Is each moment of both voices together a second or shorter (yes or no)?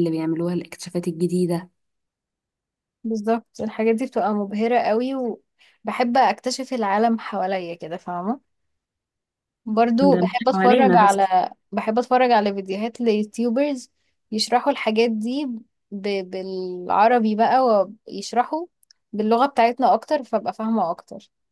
no